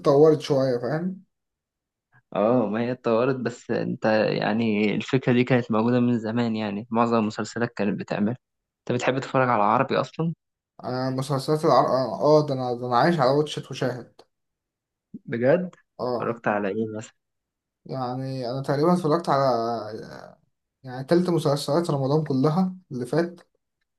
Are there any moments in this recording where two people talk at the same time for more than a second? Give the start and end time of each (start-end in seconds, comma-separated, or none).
none